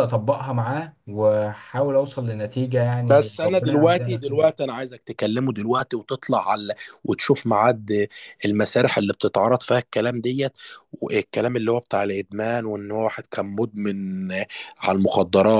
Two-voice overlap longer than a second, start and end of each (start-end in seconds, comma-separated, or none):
3.0-4.5